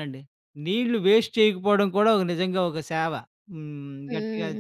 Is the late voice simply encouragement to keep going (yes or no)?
no